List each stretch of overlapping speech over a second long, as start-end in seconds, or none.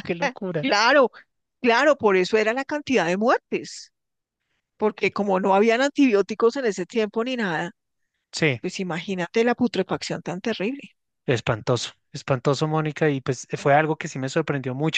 none